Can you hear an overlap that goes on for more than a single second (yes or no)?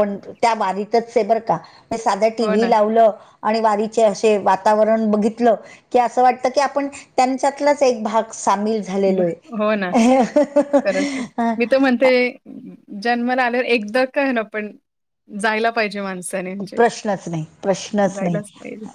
no